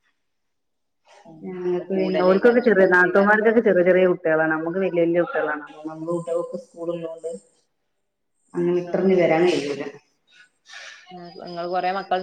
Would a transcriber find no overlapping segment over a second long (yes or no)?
no